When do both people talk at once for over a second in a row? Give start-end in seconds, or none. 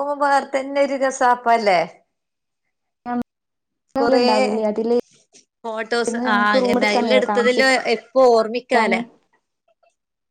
6.1-7.8